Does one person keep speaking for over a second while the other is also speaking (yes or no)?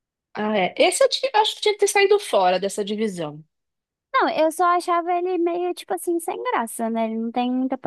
no